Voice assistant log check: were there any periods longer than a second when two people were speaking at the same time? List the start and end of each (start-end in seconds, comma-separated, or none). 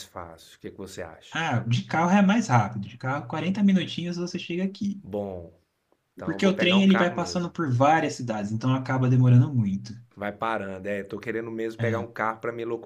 6.2-7.5